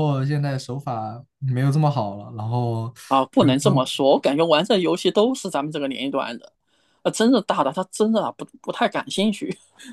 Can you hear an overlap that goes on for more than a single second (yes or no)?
no